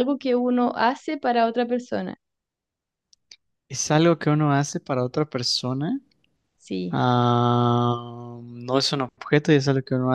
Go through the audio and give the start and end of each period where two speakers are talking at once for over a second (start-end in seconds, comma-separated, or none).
none